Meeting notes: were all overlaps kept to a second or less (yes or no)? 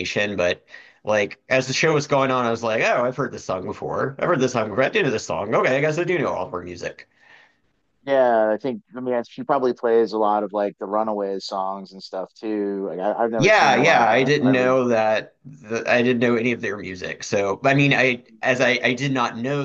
no